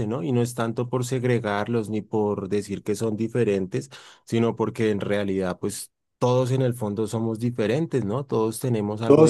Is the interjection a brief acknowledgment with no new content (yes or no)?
no